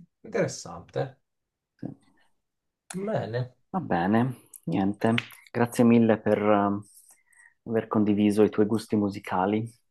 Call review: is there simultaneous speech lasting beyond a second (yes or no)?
no